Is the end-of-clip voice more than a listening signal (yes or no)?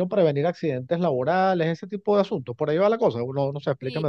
yes